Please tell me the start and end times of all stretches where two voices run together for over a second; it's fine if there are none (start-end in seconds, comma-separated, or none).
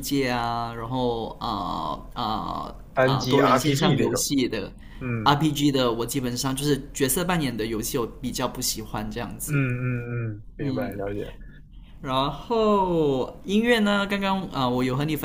2.9-4.2